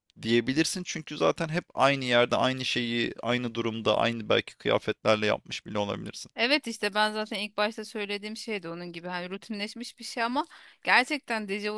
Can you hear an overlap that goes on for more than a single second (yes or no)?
no